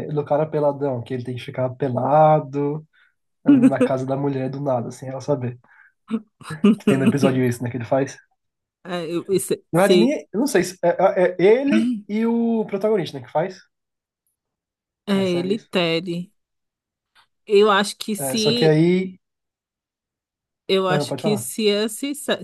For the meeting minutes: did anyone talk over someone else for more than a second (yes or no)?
no